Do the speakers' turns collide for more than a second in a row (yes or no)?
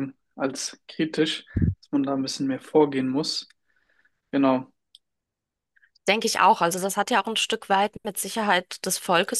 no